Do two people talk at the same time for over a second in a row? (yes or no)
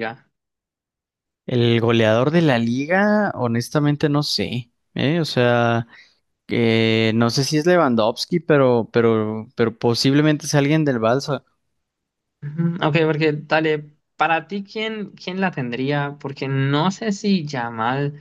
no